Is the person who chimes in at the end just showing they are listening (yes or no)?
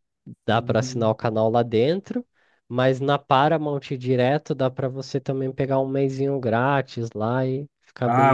no